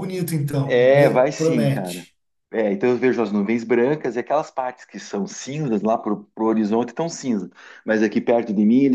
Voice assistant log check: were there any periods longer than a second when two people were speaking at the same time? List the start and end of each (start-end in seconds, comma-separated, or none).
0.7-2.1